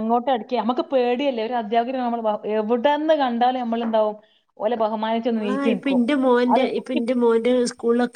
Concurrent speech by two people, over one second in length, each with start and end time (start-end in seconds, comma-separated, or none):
none